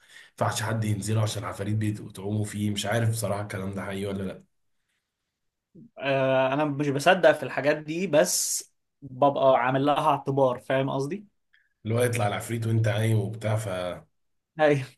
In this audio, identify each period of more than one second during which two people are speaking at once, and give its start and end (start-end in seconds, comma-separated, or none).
none